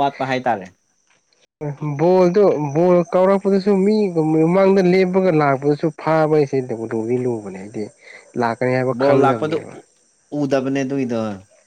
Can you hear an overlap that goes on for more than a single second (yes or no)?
no